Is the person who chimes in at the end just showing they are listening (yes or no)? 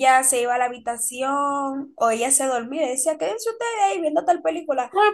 no